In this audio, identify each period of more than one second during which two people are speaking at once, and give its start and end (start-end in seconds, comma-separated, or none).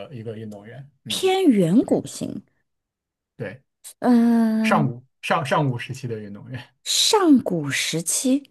none